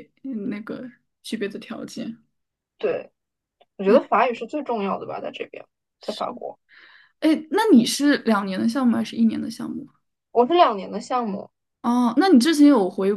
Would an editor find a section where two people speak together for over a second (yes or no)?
no